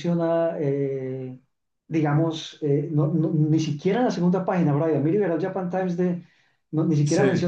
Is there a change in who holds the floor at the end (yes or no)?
no